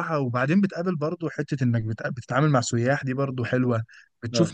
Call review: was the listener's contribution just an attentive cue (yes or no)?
yes